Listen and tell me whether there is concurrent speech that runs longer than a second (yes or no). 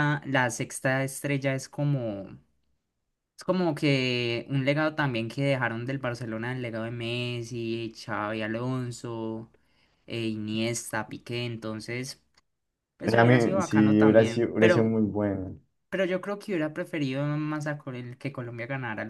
yes